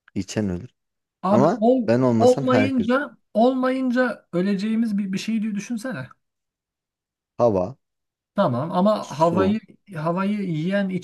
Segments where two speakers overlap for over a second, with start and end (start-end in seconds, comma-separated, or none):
1.3-3.0